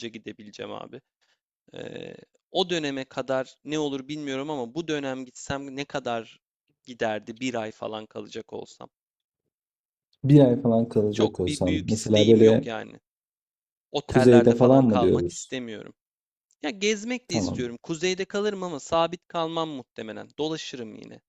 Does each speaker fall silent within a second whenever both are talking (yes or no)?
no